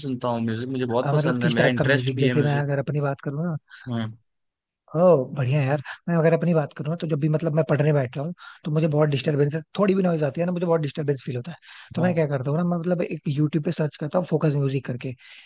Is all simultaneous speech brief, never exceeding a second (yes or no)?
no